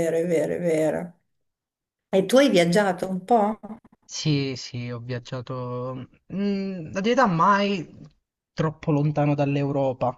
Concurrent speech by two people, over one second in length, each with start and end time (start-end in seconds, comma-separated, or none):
none